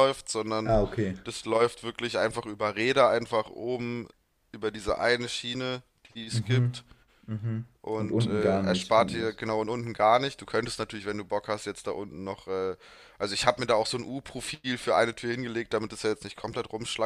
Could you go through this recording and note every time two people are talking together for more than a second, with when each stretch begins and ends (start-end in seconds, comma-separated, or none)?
7.8-9.4